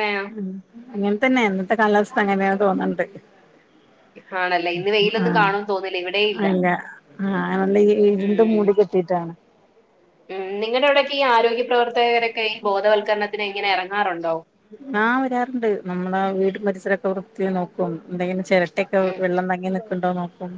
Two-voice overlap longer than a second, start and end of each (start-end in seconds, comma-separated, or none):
none